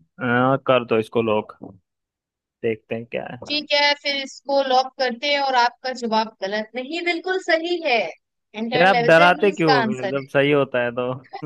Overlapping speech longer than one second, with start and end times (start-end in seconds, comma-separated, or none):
8.8-10.3